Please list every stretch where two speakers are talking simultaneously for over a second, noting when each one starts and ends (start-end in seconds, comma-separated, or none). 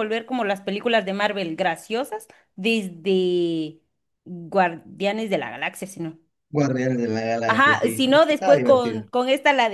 7.5-9.1